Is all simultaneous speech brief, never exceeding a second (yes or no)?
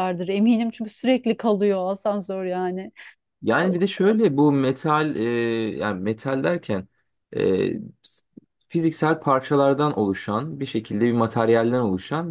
yes